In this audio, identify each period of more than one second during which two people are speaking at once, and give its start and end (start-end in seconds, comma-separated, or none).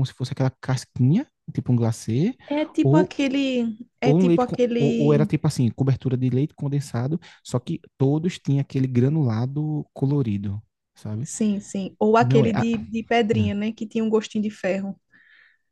4.0-5.3